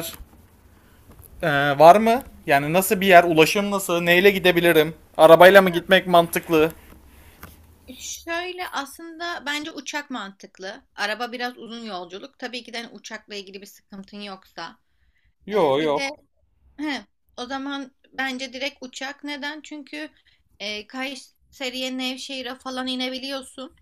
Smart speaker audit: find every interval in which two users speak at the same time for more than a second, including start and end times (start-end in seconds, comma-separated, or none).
none